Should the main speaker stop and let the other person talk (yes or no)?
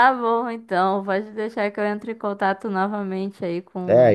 yes